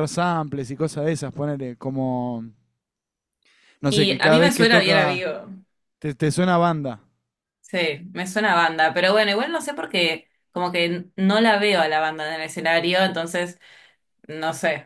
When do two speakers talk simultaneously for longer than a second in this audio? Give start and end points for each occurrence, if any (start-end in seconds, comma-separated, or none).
3.9-5.2